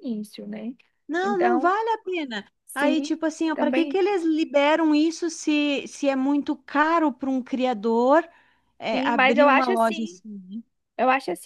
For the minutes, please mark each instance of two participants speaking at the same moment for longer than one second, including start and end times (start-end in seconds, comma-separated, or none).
2.7-4.0, 8.9-10.2